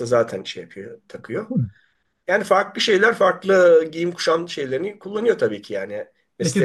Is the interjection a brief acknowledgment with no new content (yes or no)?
no